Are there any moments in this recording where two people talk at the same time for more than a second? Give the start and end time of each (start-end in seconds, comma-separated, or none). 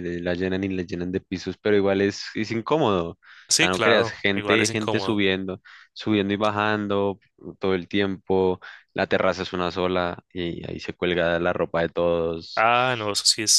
3.6-5.2